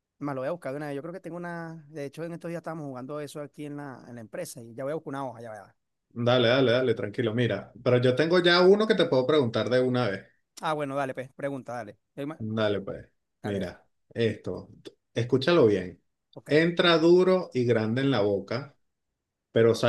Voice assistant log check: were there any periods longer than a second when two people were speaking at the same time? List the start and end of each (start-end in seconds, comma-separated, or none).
none